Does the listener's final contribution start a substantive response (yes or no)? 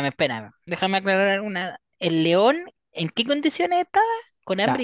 yes